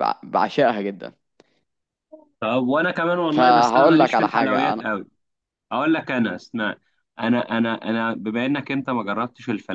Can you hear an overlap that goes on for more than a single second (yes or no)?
yes